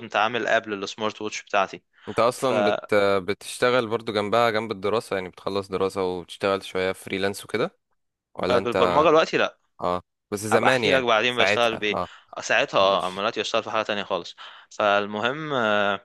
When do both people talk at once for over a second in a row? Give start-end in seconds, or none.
10.5-12.0